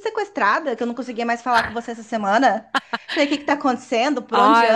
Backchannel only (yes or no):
no